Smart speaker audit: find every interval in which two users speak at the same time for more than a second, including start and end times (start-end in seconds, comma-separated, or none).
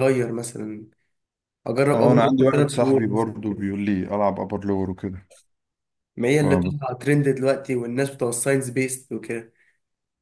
1.9-3.6